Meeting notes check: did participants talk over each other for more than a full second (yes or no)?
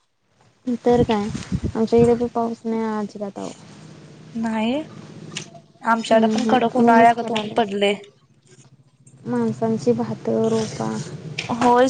yes